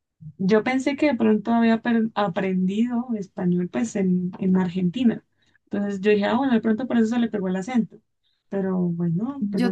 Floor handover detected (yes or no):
yes